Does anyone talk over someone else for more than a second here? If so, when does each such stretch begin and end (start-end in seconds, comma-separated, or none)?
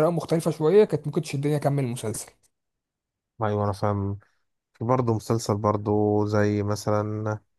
none